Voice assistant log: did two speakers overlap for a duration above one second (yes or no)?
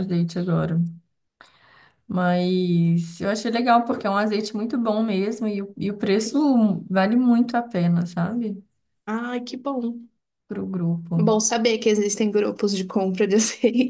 no